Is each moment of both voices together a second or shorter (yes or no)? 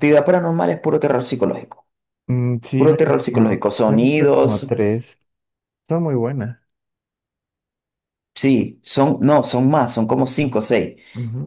no